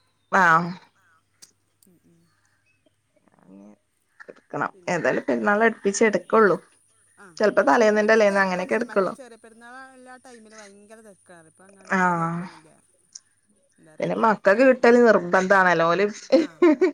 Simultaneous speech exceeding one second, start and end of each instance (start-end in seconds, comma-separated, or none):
7.8-9.1